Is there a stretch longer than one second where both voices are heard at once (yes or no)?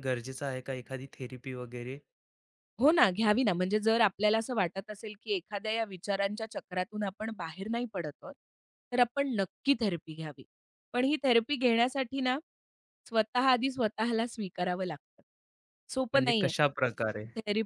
no